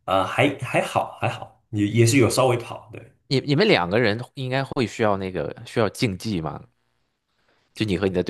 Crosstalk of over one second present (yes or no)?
no